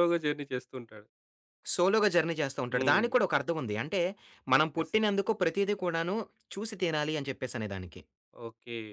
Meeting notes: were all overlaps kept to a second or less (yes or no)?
yes